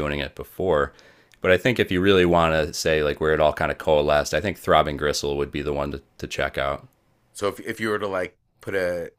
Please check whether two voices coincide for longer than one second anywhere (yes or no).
no